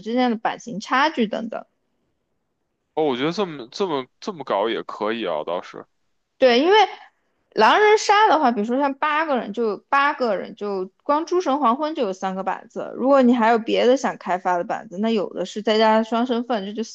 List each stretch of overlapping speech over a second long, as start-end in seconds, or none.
none